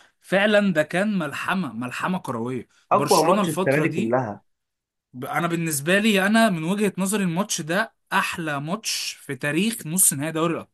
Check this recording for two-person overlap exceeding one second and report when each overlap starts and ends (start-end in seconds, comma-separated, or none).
2.9-4.2